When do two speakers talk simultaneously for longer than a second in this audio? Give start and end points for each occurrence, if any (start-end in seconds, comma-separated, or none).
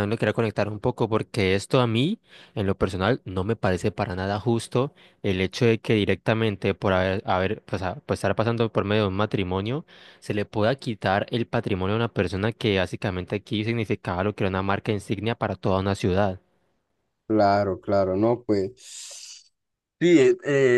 none